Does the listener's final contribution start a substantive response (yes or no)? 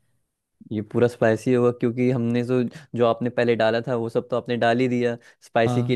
no